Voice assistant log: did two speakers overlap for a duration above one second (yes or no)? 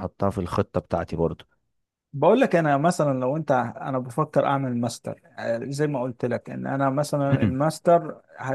no